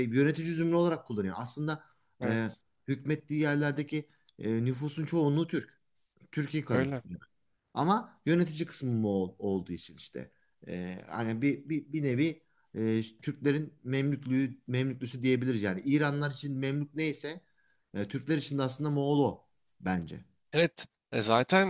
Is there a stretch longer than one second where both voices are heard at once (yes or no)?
no